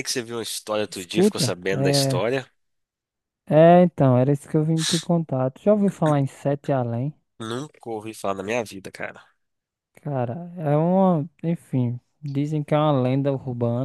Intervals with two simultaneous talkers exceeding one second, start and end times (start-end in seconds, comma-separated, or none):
0.9-2.3